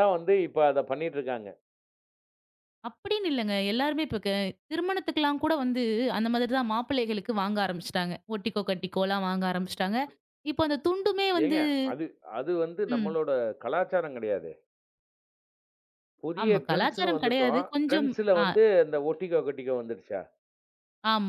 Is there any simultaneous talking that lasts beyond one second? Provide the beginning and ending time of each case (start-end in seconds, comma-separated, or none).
16.4-18.4